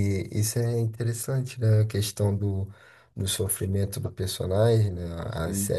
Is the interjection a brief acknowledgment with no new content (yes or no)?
yes